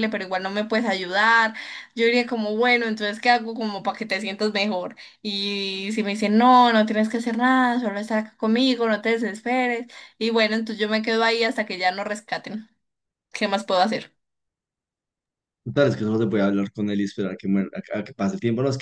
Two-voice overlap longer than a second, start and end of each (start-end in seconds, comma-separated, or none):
none